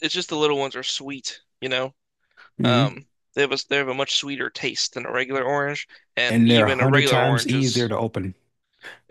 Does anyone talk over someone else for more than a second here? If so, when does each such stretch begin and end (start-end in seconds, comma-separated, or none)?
6.3-7.9